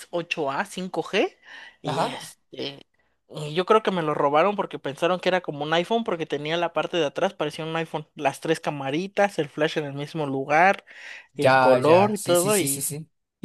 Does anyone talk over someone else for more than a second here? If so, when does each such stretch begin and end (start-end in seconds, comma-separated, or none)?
11.4-12.9